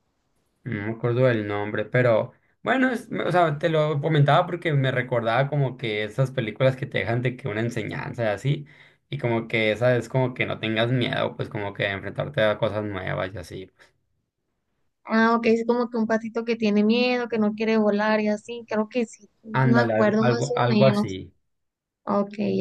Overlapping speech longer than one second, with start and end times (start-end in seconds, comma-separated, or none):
19.5-21.1